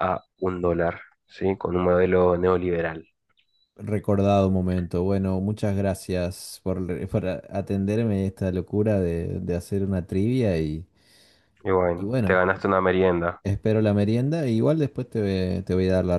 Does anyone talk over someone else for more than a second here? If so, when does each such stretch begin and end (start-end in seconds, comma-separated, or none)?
none